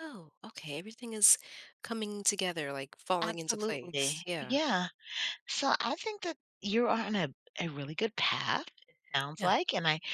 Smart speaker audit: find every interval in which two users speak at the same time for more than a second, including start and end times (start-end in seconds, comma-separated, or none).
3.2-4.6